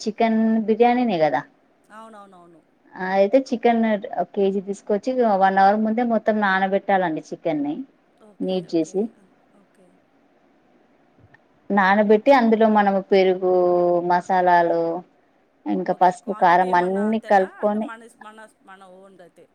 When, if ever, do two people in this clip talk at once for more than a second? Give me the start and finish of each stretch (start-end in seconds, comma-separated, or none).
15.9-17.9